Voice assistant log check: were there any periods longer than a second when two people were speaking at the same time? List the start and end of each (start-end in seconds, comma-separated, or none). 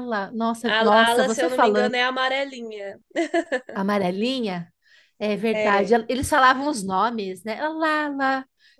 0.7-1.9